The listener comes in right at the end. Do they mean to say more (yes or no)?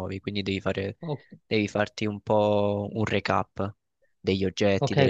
yes